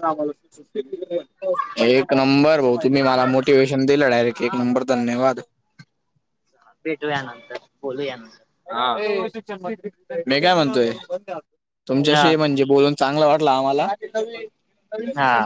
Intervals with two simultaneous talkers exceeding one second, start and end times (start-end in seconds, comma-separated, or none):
none